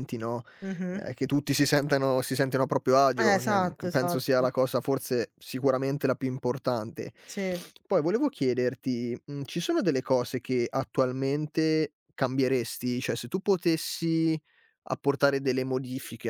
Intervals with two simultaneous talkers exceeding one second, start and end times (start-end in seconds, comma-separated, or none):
3.2-4.5